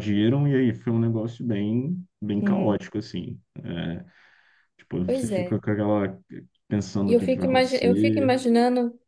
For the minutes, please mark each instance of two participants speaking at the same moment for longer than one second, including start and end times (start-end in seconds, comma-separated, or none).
7.1-8.3